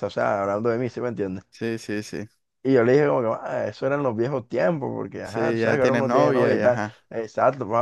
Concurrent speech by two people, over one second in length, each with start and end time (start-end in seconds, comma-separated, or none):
5.2-7.0